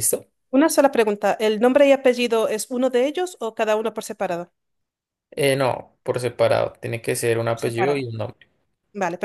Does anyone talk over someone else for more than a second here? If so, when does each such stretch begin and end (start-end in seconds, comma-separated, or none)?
none